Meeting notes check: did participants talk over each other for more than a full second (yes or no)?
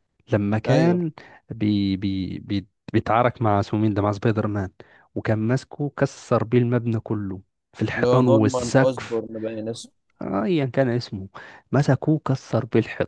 yes